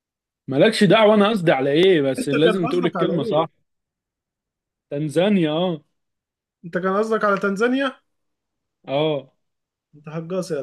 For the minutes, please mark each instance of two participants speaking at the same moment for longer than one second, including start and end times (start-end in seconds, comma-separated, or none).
2.2-3.5